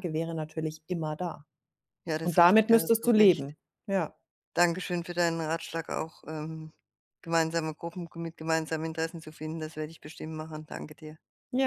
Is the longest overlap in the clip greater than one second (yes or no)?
yes